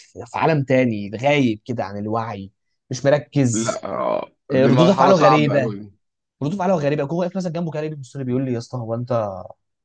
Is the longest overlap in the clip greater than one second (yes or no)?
yes